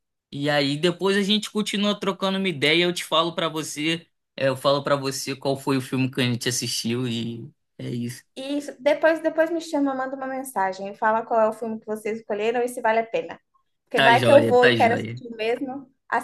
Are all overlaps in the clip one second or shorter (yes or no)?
no